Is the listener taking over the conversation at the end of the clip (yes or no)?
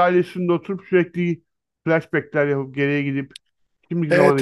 yes